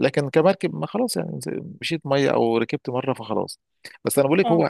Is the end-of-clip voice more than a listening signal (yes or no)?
no